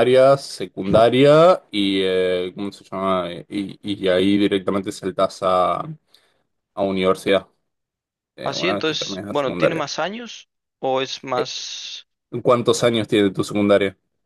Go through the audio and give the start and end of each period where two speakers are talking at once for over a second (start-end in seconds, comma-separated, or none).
8.4-9.8